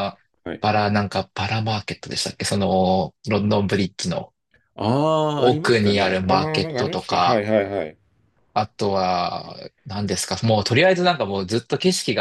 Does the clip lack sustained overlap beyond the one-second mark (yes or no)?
no